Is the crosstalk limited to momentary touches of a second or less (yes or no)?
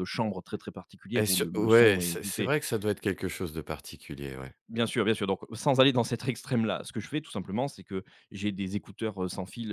no